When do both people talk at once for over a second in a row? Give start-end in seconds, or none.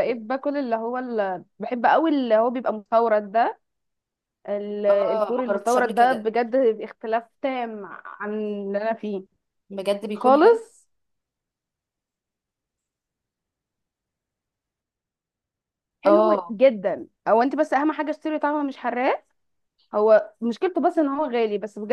4.9-6.3